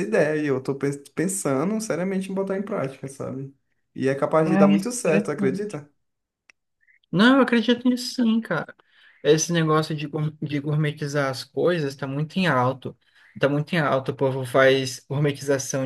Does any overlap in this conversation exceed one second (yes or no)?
yes